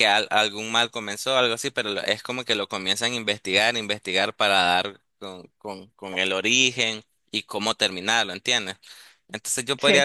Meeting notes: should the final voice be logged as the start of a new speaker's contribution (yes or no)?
no